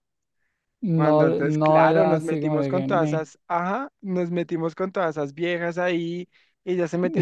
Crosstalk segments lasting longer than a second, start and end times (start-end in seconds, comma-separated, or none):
0.9-3.2